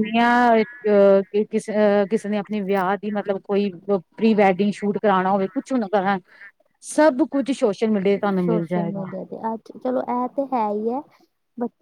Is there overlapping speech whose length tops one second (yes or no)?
no